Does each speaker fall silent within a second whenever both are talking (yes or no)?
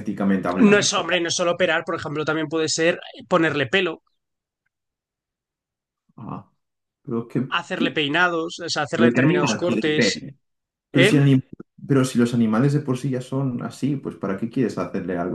no